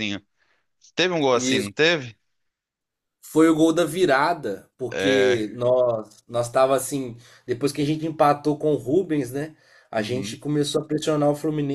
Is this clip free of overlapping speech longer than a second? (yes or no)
yes